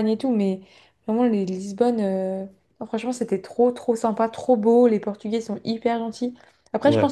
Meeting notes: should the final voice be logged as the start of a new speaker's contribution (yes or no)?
no